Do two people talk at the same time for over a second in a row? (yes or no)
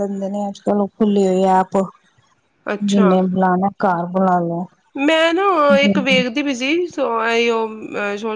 no